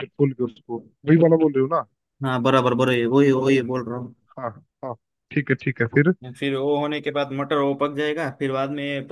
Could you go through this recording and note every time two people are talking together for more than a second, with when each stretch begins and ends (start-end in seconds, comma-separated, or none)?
none